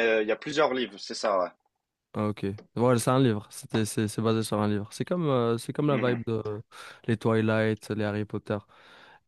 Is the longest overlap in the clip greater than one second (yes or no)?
no